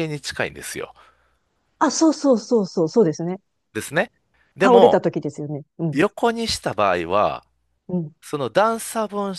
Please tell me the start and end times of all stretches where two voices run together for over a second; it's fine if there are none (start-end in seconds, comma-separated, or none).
none